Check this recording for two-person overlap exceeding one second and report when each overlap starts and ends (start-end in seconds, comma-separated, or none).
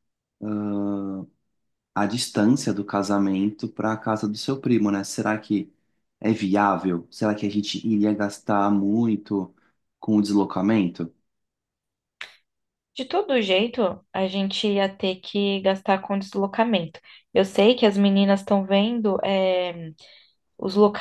none